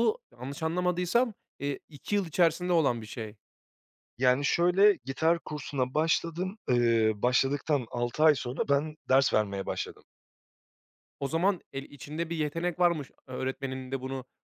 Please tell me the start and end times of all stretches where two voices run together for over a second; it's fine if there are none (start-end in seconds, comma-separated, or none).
none